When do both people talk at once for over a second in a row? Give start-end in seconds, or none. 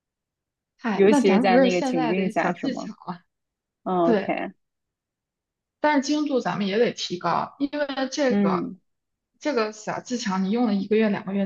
0.9-2.9